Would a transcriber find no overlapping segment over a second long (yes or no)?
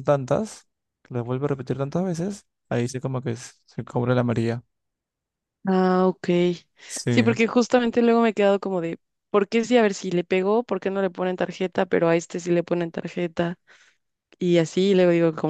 yes